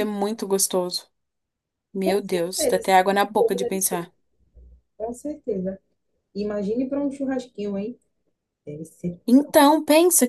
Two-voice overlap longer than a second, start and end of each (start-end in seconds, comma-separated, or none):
2.0-4.1